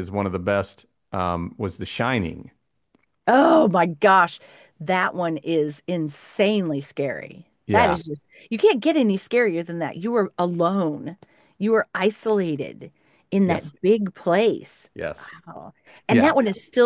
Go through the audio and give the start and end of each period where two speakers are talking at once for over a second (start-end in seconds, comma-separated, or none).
none